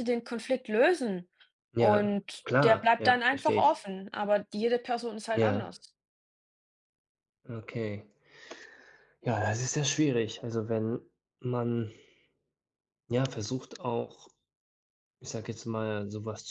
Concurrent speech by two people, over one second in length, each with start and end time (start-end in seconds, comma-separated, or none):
1.8-3.9